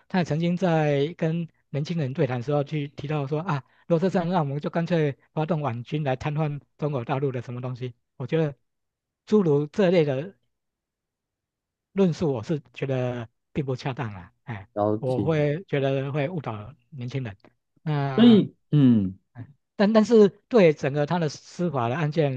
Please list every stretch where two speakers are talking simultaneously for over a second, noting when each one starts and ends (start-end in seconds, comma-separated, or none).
none